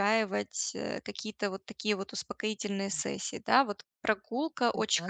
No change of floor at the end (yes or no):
yes